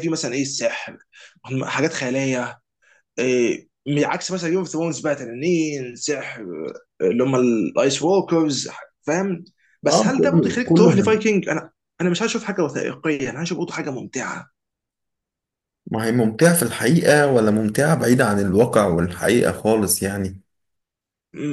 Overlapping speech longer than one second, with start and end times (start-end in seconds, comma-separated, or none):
9.9-11.3